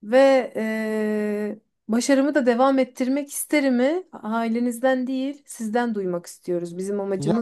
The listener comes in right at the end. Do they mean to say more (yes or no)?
yes